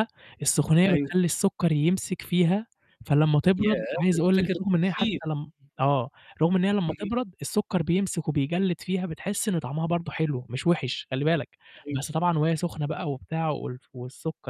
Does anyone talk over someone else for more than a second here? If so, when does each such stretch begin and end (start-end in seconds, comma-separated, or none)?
3.6-5.2